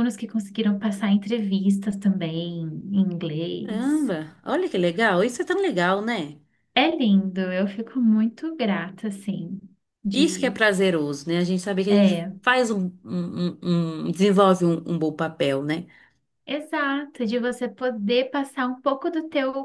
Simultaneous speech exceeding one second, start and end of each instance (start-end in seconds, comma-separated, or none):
none